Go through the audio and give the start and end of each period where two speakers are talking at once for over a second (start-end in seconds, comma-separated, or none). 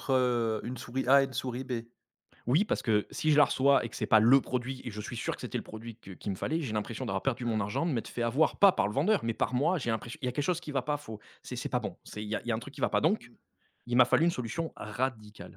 none